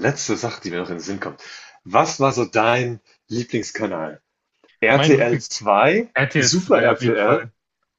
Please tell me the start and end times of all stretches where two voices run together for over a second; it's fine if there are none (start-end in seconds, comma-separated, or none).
6.1-7.5